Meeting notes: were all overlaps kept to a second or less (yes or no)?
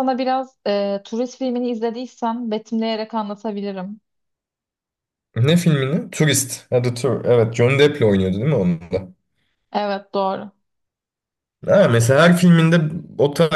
yes